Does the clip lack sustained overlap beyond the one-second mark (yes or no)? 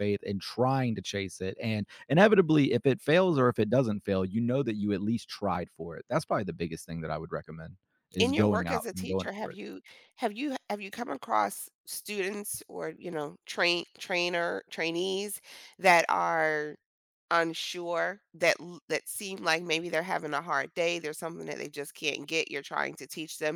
no